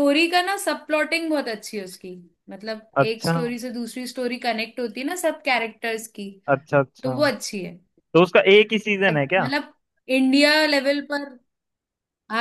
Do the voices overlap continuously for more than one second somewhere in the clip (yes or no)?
no